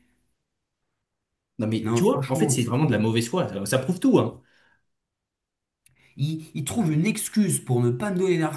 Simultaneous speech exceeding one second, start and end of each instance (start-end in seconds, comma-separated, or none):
1.8-3.0